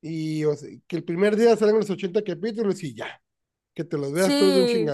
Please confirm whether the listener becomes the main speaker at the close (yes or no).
yes